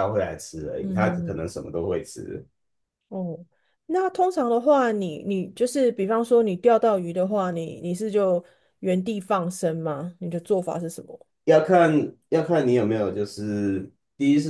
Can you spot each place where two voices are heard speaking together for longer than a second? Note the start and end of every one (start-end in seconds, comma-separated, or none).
none